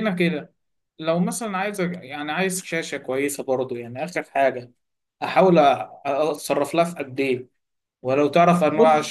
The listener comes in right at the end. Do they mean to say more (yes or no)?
no